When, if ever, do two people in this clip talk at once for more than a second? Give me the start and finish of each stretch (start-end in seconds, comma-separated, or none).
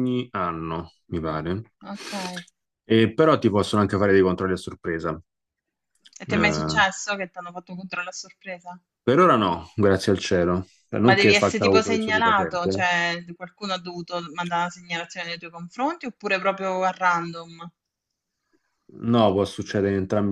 11.0-12.8